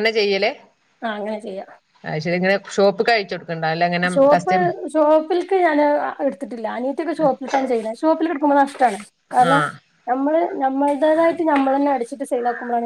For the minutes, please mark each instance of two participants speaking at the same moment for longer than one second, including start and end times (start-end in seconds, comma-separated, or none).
none